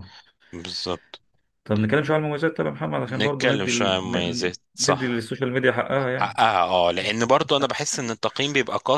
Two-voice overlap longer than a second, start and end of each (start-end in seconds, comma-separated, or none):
3.2-5.2